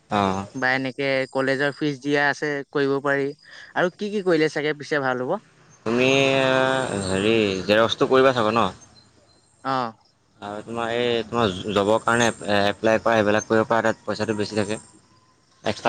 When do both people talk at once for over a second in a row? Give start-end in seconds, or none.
none